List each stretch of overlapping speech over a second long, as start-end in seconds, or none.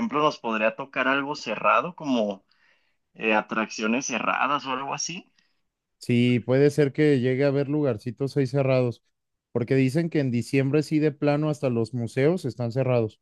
none